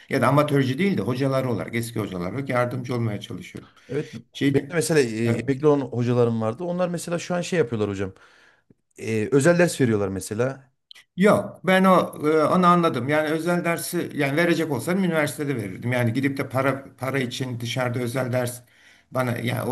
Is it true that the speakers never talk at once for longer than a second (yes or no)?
yes